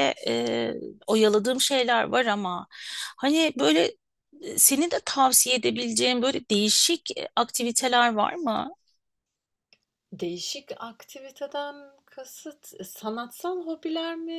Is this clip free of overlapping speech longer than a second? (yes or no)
yes